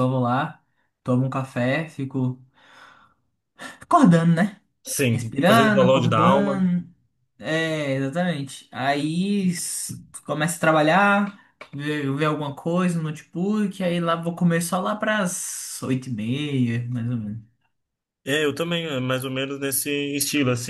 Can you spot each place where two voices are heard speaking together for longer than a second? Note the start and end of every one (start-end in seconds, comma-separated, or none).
5.1-6.7